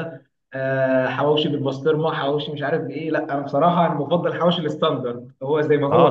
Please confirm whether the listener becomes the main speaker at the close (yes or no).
yes